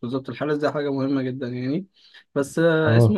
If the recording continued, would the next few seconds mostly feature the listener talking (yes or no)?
no